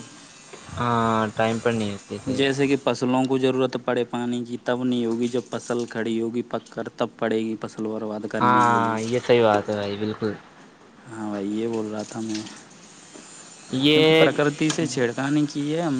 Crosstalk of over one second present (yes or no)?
no